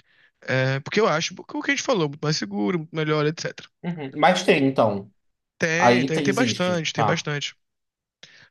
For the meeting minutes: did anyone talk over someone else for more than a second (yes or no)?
yes